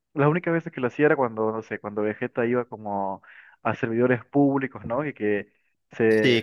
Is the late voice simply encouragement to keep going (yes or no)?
yes